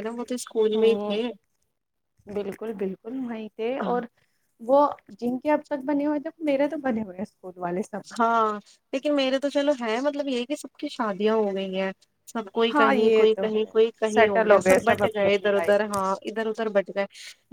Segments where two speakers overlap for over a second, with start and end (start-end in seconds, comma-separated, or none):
12.7-15.7